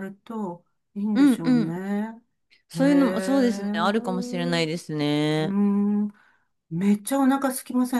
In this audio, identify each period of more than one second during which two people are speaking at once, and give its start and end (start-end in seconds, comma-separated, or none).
2.7-4.7